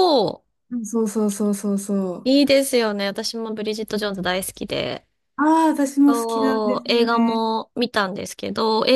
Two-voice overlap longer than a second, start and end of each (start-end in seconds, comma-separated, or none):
6.1-7.4